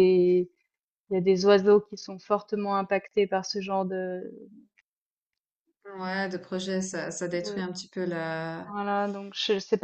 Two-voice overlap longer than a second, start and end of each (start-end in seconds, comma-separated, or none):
none